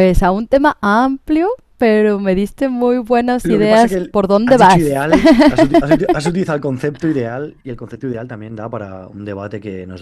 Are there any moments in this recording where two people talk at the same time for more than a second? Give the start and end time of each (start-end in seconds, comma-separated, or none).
3.4-4.9